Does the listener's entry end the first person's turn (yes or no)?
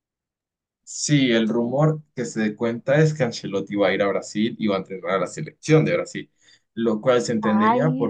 no